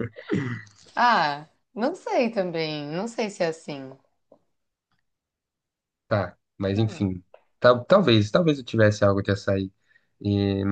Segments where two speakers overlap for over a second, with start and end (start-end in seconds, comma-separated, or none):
none